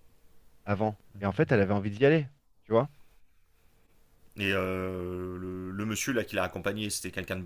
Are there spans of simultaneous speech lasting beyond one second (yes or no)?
no